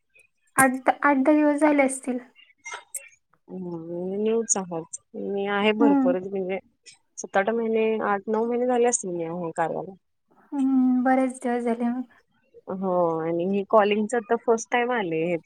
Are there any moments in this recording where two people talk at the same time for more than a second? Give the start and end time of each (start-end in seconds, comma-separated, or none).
none